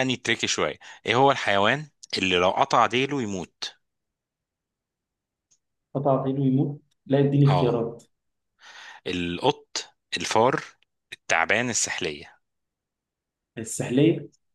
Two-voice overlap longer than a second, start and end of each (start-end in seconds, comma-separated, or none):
none